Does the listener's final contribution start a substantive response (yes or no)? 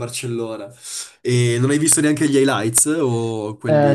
yes